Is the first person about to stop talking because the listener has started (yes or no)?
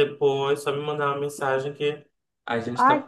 yes